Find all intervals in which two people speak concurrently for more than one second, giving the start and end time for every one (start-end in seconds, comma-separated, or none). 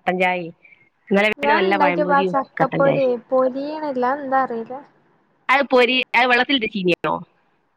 none